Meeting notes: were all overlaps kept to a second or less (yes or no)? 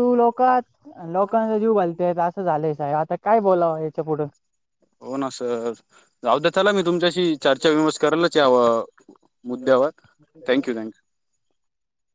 yes